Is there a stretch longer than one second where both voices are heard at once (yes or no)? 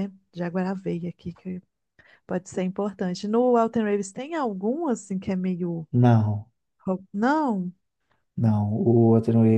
no